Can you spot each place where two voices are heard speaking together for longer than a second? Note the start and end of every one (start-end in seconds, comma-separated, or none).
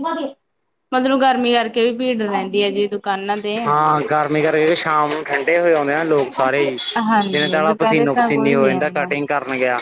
7.3-9.1